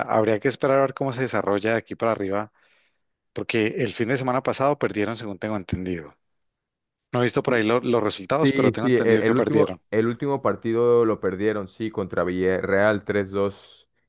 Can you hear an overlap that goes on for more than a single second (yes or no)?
yes